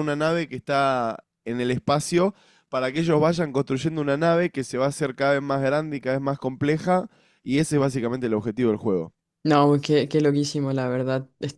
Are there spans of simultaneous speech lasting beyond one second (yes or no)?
no